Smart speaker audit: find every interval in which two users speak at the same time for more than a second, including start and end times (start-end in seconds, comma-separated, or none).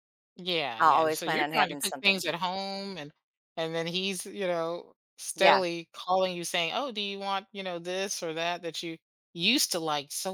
0.8-2.3